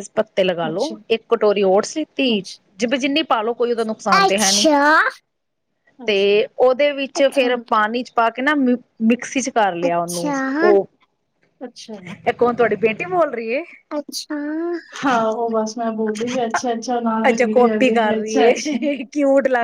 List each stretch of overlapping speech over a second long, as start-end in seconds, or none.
17.3-18.8